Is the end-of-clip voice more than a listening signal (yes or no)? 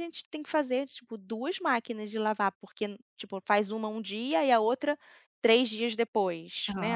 no